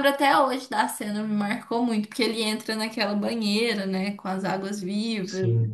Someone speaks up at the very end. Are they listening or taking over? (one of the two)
listening